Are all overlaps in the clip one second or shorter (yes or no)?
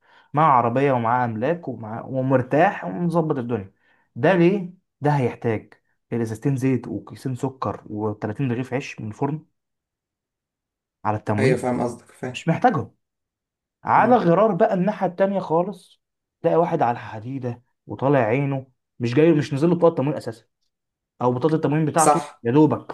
yes